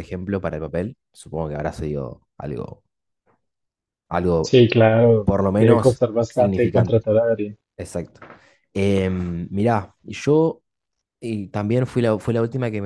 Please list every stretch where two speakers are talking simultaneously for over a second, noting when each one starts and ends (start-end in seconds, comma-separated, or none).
5.2-7.0